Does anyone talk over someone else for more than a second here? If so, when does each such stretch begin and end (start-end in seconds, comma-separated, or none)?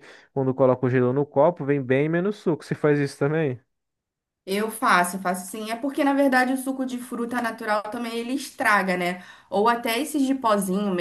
none